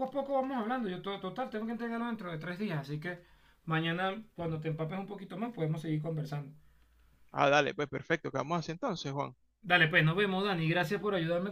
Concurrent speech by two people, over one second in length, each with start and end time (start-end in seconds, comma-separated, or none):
none